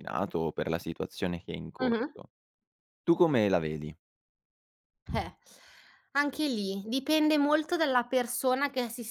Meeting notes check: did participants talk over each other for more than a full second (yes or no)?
no